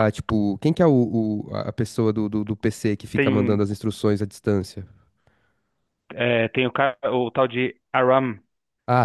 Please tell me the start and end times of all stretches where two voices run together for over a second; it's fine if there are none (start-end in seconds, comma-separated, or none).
none